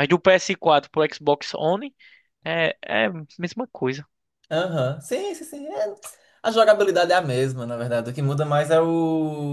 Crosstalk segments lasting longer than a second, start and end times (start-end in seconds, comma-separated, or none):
none